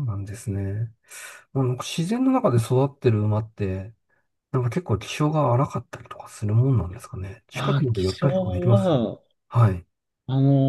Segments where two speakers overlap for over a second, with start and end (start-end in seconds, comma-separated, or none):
7.5-9.0